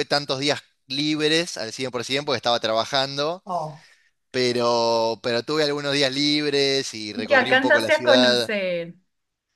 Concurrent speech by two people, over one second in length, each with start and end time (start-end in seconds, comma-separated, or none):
7.3-8.5